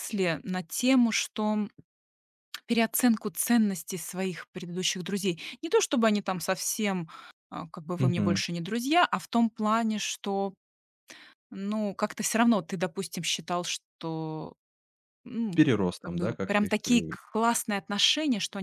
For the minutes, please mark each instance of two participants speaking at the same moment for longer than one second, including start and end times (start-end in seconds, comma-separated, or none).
15.6-17.1